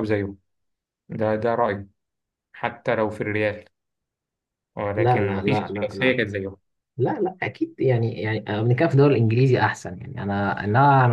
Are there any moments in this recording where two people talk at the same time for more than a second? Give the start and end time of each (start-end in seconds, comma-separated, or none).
5.0-6.2